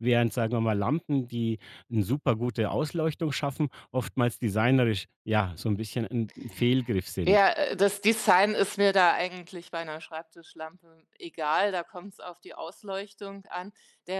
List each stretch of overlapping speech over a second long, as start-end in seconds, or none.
none